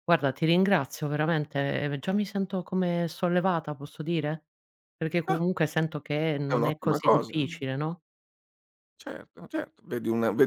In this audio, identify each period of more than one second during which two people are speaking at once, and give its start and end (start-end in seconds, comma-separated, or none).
6.5-7.7